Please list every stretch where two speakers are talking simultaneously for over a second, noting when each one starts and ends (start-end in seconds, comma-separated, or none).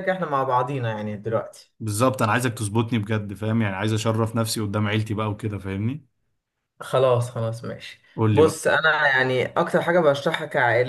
none